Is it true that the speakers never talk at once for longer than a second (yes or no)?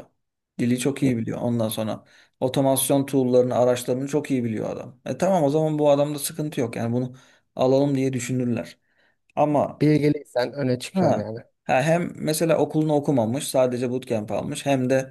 yes